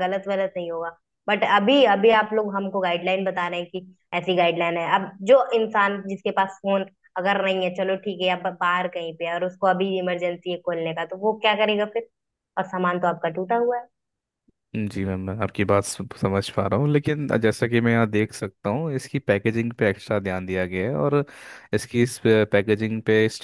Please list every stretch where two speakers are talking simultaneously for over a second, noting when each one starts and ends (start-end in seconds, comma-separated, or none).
none